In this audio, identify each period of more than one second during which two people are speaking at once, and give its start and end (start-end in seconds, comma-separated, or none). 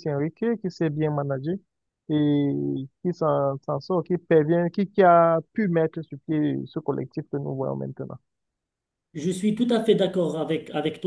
none